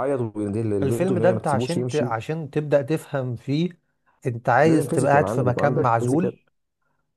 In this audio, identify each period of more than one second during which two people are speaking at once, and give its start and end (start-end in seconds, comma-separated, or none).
0.8-2.1, 4.6-6.3